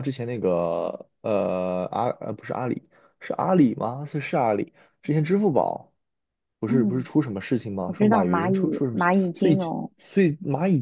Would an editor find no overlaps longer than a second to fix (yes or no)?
no